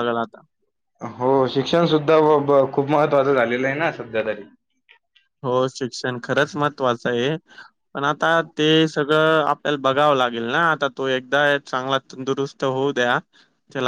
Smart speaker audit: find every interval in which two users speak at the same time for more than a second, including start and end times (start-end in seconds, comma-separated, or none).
none